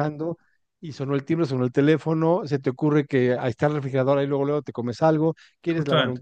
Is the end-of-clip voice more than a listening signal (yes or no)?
no